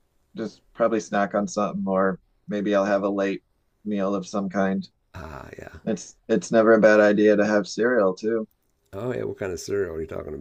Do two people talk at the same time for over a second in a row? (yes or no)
no